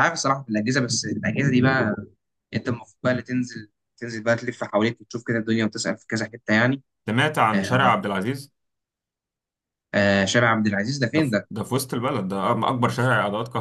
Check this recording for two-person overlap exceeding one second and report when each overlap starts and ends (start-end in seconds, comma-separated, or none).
none